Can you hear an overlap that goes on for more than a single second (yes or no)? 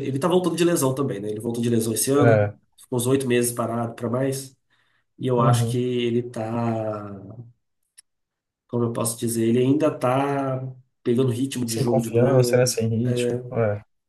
yes